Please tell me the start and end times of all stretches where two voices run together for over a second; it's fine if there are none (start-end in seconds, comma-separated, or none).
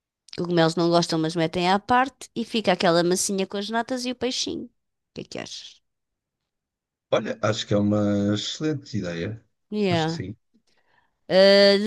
none